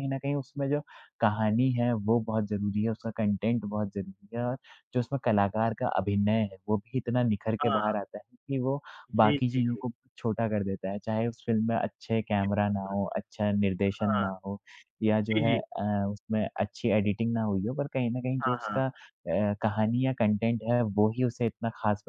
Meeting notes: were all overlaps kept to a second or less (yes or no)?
yes